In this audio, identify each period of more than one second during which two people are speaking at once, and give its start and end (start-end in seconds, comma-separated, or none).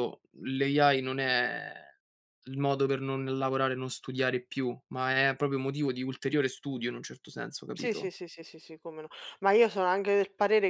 none